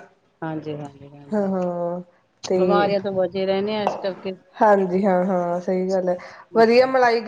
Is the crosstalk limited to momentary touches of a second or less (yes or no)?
yes